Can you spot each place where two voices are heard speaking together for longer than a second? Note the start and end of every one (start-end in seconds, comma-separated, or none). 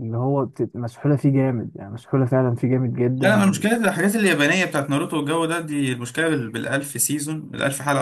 none